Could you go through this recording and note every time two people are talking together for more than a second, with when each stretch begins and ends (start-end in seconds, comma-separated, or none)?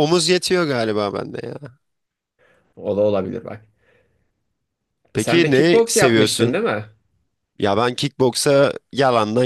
5.2-6.6